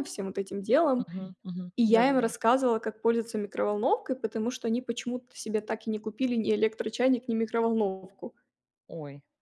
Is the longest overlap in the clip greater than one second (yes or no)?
no